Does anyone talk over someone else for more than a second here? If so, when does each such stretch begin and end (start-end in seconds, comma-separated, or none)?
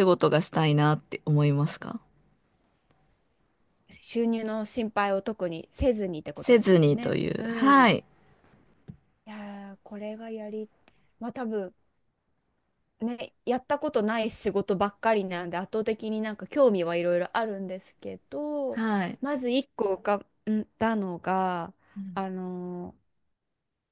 6.3-7.9